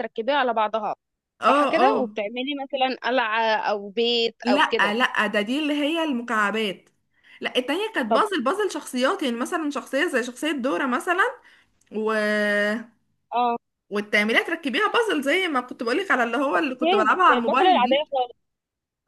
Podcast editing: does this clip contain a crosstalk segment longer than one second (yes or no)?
yes